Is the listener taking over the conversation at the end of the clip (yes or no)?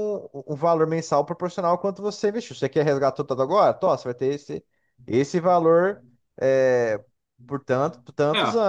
no